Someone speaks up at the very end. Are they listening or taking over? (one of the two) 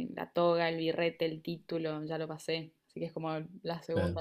listening